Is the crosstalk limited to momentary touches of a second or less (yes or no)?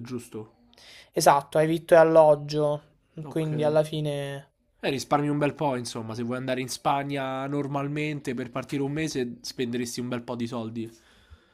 yes